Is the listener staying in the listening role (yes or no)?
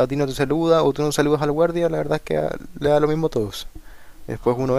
yes